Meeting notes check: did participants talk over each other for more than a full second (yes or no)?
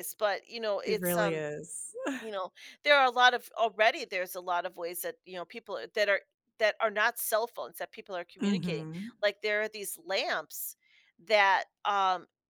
no